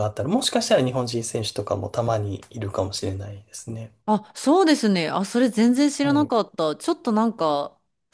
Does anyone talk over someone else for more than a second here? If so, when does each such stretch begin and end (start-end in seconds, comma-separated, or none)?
none